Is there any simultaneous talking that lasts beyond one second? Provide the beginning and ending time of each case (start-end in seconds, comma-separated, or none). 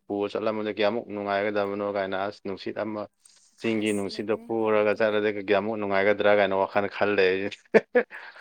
3.6-5.2